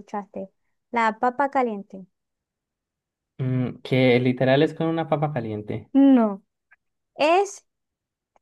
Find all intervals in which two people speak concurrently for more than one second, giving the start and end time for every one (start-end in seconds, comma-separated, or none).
none